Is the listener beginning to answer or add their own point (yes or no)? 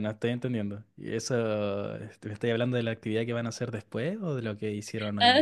yes